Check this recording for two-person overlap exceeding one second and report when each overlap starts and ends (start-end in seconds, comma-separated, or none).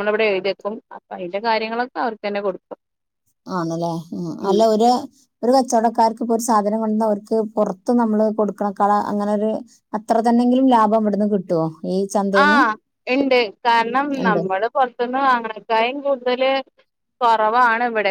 none